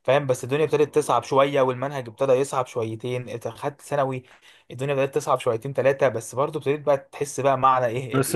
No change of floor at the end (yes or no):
no